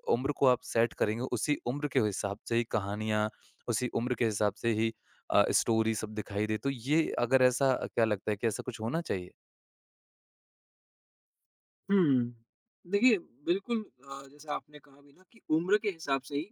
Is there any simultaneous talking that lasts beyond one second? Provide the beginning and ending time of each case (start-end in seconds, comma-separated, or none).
none